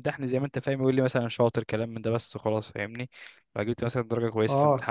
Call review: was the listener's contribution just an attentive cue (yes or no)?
no